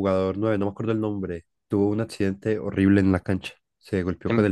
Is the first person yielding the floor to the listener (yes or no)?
no